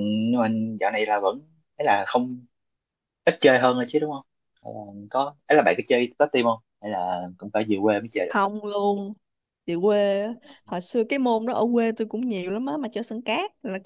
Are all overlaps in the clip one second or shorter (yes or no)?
yes